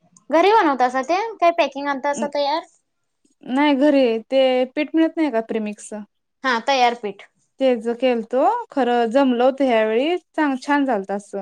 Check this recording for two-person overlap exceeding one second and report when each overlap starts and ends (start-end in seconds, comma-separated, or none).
none